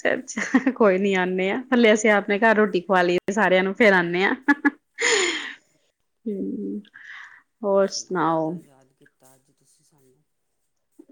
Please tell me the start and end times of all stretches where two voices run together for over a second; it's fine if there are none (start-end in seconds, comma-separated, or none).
none